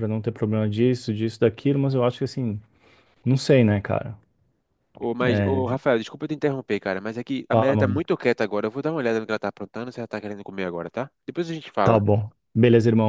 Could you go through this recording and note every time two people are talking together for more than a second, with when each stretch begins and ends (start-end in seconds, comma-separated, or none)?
none